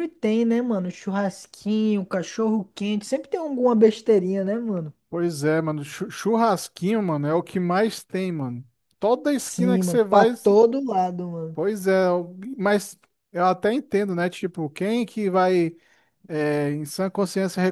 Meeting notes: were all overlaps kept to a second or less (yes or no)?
no